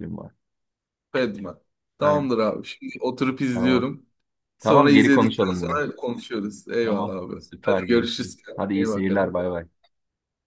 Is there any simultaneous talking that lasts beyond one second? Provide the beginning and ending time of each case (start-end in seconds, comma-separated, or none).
4.6-5.8, 6.8-9.3